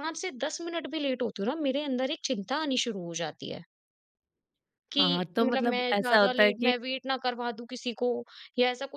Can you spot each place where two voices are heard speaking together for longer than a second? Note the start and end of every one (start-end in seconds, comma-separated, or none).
5.0-6.7